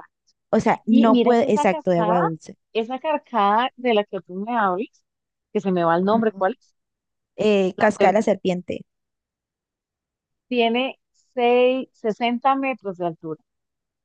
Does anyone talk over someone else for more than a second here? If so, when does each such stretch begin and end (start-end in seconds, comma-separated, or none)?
0.9-2.2